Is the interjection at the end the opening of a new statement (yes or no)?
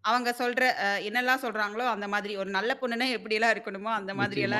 yes